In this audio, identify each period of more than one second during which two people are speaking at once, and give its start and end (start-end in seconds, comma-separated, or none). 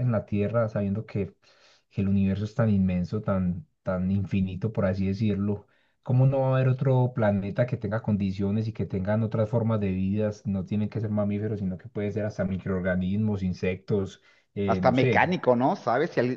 none